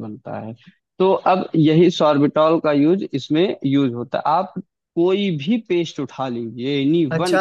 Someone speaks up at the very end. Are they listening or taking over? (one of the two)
taking over